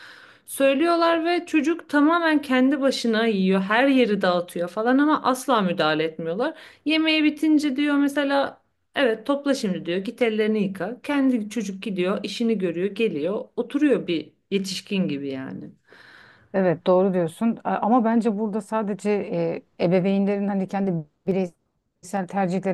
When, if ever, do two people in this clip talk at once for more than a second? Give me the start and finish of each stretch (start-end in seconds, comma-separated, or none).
none